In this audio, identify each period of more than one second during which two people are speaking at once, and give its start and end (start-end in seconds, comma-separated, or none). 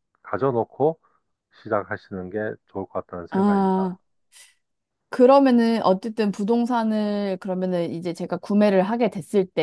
none